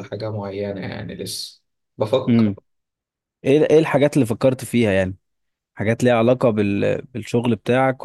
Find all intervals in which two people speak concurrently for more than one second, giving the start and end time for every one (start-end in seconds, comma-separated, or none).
none